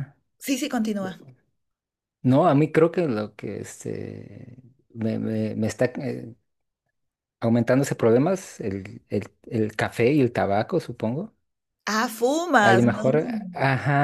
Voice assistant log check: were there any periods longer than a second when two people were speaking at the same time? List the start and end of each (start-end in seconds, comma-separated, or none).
none